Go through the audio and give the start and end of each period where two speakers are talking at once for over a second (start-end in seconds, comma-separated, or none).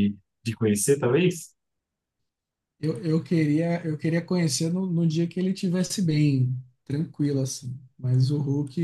none